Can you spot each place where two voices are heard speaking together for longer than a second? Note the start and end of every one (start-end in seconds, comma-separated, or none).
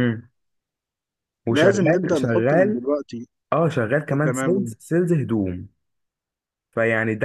1.5-2.8